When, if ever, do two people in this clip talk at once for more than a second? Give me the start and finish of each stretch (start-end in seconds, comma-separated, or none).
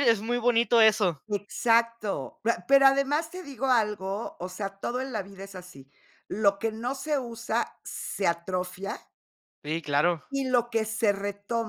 none